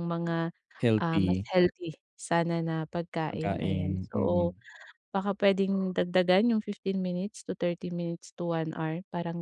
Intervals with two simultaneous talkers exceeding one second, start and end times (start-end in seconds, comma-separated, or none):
3.3-4.5